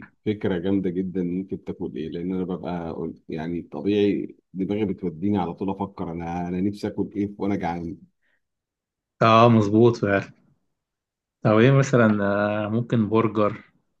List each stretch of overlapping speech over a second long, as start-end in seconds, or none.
none